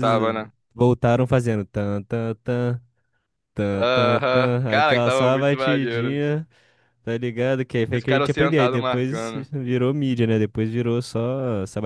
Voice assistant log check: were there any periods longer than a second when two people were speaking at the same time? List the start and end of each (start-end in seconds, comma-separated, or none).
3.7-6.2, 7.9-9.5